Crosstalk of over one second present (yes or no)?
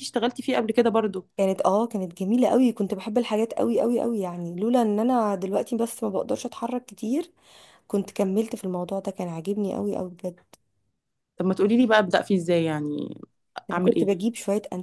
no